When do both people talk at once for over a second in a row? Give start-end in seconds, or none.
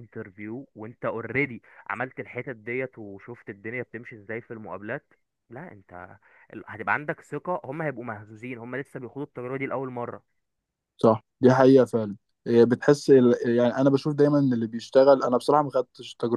none